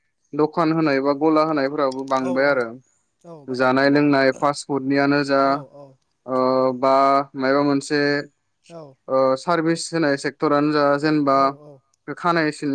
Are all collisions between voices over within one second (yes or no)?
yes